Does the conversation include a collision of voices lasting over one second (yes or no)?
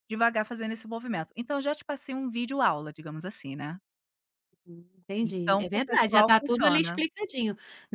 yes